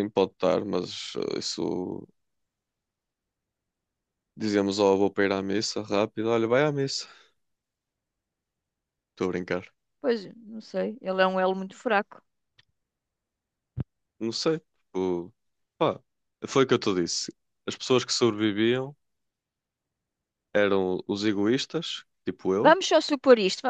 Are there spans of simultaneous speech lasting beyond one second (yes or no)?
no